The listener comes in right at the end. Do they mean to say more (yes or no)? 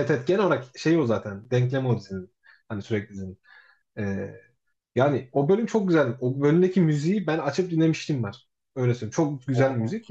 no